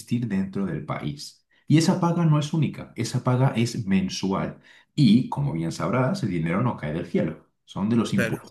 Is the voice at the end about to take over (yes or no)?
no